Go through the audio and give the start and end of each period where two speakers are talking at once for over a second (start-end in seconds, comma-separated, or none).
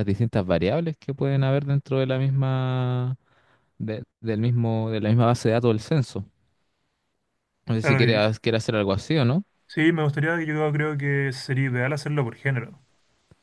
none